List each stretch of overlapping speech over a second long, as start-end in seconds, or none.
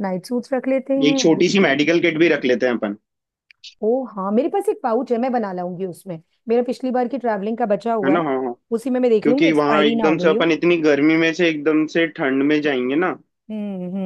9.2-10.4